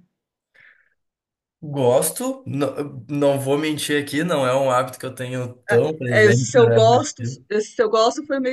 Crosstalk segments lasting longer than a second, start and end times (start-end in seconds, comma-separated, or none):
6.1-7.5